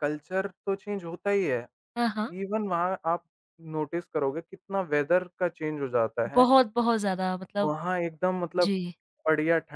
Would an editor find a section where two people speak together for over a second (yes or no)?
no